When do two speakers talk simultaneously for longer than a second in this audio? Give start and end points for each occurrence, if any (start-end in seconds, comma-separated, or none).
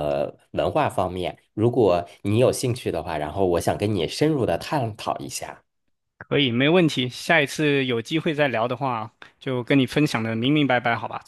none